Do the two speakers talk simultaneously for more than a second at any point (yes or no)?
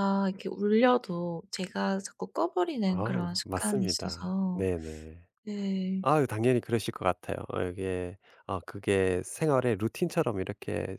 yes